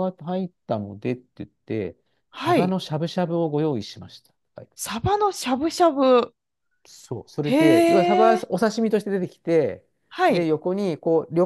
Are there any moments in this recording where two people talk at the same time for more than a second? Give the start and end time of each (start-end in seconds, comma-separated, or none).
none